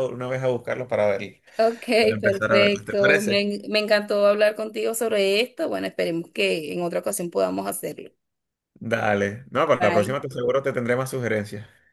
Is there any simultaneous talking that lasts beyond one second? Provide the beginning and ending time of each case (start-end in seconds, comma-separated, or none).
2.2-3.5